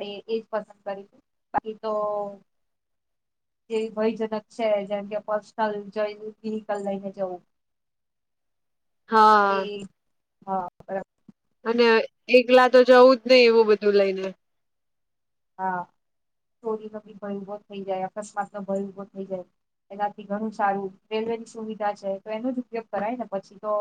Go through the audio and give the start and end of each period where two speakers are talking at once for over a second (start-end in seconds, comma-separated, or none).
none